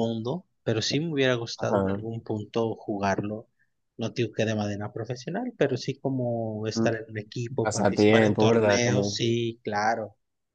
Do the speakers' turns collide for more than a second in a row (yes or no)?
yes